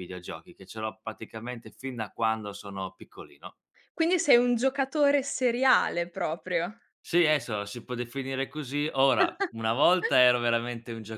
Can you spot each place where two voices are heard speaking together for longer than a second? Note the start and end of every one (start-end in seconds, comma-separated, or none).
none